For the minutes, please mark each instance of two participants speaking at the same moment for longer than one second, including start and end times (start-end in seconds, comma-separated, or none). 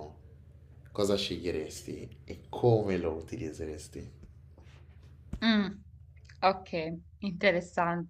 none